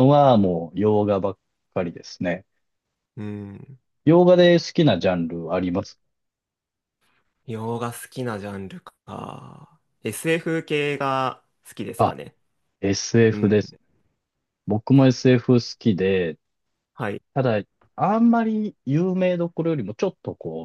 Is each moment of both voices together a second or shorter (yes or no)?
yes